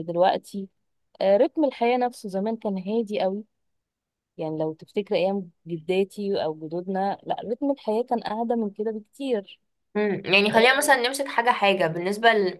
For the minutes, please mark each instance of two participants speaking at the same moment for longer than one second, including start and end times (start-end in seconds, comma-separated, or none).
none